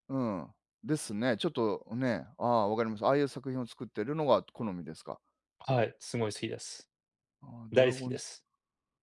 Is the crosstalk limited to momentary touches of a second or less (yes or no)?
yes